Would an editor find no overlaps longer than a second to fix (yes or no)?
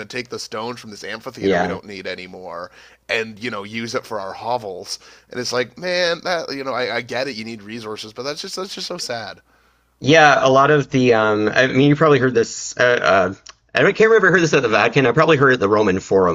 yes